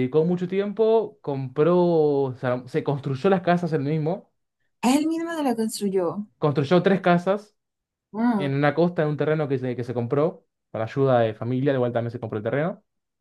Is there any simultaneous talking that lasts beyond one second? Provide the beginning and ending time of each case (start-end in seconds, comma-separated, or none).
none